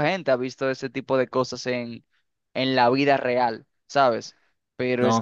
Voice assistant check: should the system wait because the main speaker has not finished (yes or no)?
yes